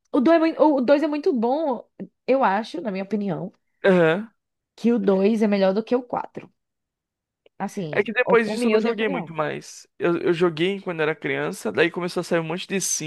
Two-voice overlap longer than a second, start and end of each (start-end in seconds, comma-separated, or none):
7.9-9.3